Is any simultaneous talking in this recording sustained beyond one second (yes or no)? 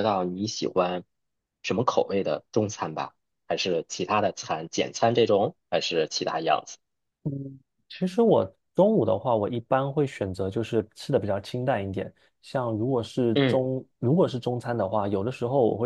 no